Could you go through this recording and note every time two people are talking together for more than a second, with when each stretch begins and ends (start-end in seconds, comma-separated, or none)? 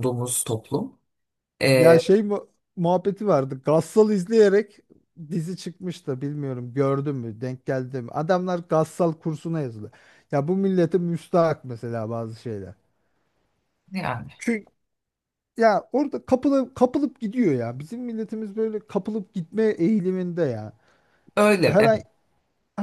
none